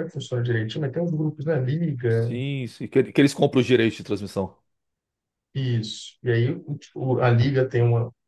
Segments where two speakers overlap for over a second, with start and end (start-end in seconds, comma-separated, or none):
none